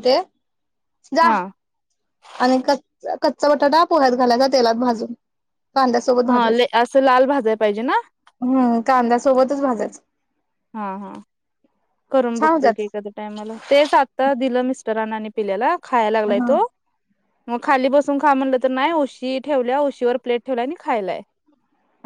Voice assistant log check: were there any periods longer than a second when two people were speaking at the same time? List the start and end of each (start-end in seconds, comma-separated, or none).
none